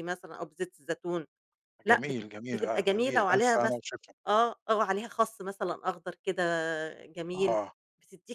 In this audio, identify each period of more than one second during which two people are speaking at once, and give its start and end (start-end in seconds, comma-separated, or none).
1.9-3.8